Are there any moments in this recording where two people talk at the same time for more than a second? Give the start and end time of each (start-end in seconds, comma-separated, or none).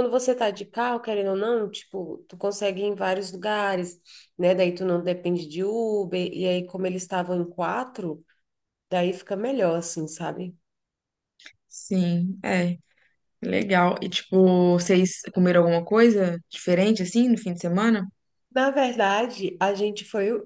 none